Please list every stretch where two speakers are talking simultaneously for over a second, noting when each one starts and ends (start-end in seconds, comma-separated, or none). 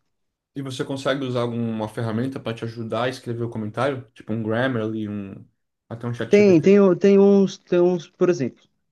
none